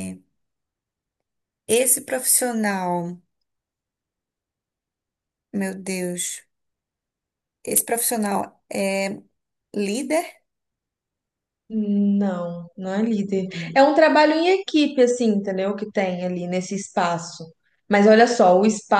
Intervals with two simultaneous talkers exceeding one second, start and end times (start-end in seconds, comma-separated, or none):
none